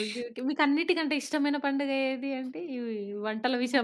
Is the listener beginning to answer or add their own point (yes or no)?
no